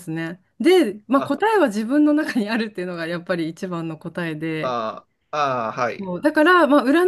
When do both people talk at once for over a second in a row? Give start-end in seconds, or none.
none